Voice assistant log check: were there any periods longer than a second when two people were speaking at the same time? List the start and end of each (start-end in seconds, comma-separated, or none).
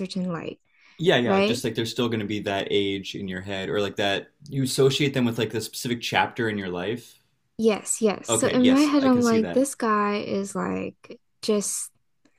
8.3-9.7